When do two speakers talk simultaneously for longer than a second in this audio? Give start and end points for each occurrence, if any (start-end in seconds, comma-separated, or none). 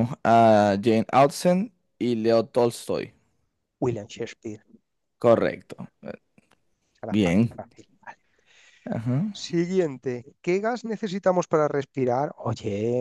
none